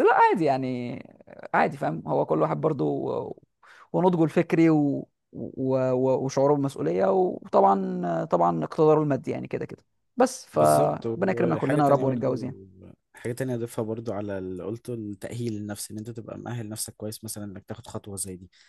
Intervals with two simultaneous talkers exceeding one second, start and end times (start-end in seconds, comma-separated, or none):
10.5-12.3